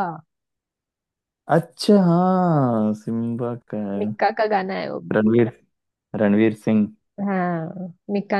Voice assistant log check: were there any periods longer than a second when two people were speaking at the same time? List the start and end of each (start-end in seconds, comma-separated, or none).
none